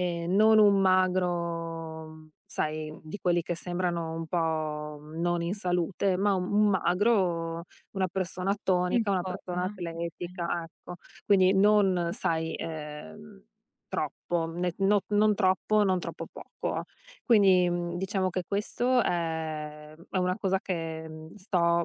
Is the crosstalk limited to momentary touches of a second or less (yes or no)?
no